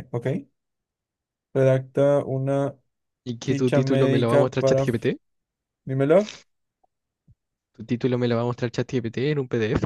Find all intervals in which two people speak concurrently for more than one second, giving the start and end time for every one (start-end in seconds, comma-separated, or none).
3.5-5.0